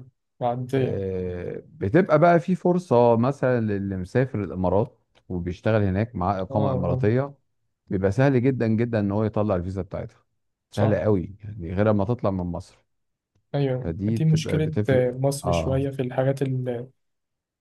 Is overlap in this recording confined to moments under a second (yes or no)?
no